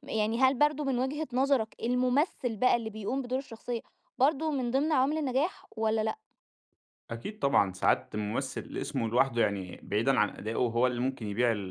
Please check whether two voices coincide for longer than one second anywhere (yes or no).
no